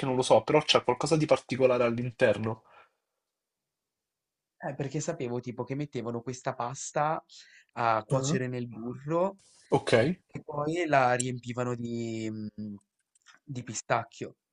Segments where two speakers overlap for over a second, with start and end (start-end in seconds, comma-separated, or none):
none